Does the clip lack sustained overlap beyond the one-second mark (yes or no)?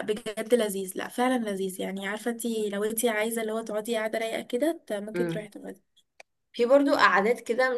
yes